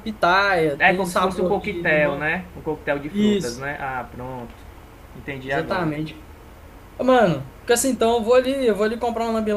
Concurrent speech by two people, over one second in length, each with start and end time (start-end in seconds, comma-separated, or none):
0.8-2.3